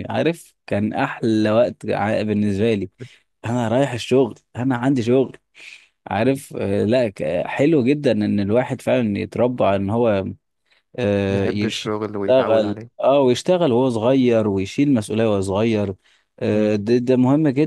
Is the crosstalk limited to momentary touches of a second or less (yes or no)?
no